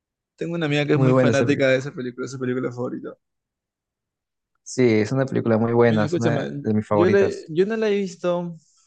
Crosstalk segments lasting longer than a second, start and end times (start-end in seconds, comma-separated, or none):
5.8-7.5